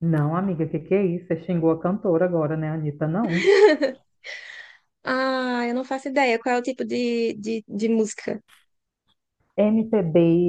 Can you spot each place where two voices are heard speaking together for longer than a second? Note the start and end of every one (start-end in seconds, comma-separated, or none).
none